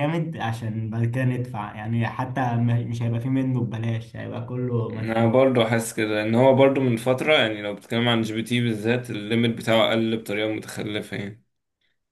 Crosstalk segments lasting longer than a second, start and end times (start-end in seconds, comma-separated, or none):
none